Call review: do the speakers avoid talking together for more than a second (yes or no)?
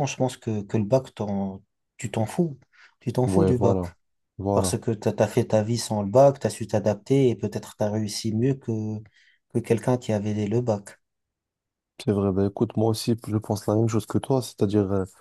yes